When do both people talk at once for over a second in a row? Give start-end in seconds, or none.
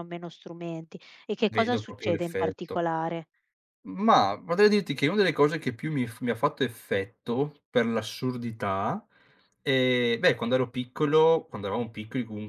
1.4-2.8